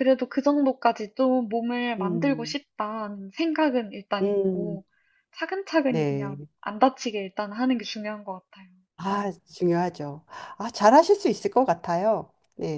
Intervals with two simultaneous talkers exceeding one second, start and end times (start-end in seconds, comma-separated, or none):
none